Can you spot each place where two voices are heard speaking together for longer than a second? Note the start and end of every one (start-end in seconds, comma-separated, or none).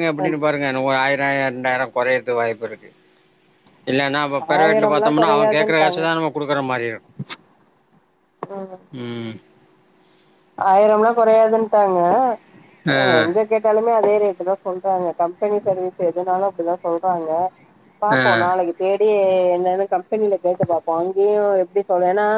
4.6-6.0